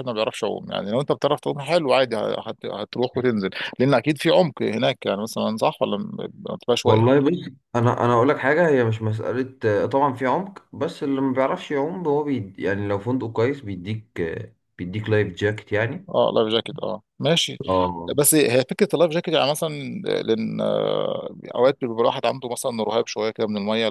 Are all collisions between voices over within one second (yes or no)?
yes